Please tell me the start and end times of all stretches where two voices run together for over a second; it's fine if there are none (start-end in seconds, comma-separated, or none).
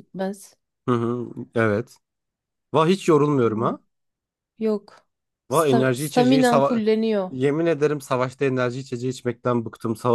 5.5-6.8